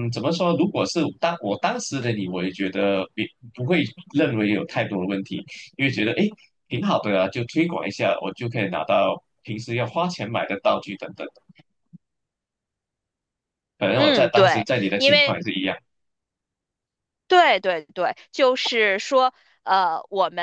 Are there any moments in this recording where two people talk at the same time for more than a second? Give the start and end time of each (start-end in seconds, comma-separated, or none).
13.9-15.4